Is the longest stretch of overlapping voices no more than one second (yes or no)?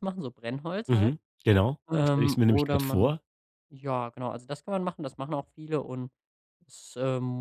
no